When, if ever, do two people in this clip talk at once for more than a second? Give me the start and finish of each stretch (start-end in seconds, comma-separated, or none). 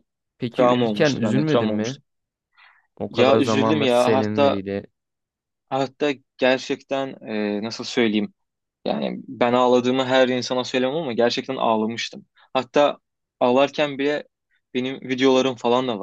0.5-2.0, 3.1-4.6